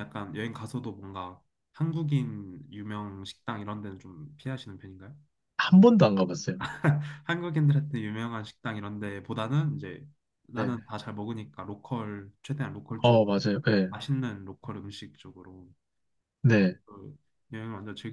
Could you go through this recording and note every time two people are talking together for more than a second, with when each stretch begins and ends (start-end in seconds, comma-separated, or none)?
none